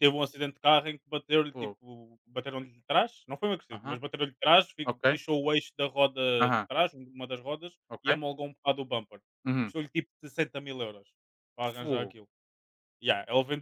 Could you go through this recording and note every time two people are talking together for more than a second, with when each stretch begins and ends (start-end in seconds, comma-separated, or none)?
none